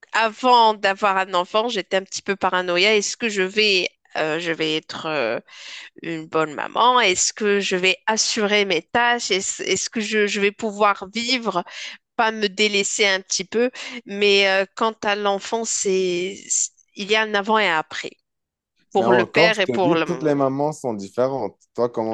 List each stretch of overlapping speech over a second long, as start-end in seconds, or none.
19.0-20.4